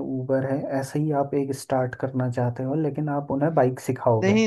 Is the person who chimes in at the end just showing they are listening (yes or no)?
no